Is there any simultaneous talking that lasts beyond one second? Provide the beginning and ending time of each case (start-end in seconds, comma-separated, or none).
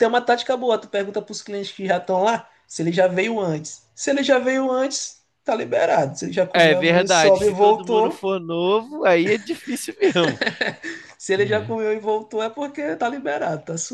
6.5-8.2